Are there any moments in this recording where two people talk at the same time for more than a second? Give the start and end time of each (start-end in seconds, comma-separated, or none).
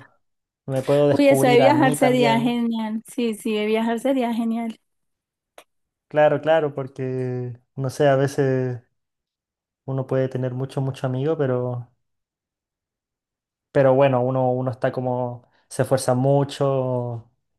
1.1-2.6